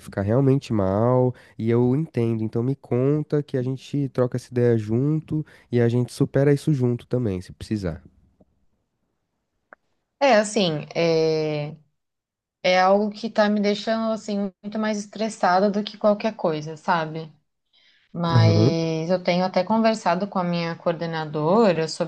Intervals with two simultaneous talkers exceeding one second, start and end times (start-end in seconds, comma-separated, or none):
none